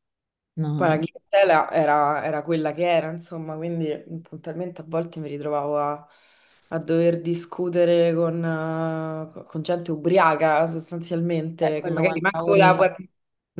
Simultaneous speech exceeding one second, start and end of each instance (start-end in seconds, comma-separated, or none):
11.6-12.8